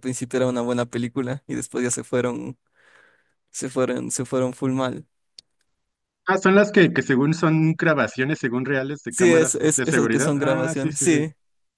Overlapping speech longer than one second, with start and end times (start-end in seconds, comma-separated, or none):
9.1-11.2